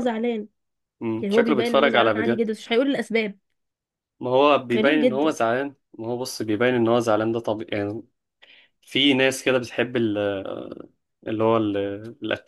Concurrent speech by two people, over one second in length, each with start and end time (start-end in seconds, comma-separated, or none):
1.2-2.5